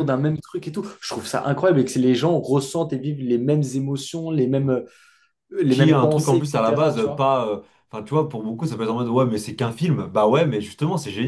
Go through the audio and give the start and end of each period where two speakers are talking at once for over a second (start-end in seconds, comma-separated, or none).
5.7-7.3